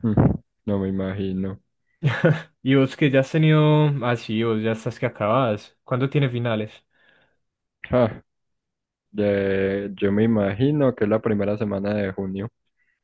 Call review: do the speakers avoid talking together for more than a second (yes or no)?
yes